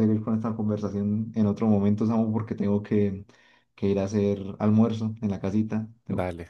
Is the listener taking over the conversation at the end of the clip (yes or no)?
yes